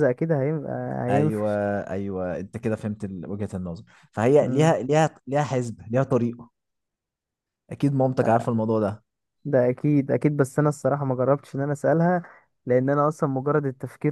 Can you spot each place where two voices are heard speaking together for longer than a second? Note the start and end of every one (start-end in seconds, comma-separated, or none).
none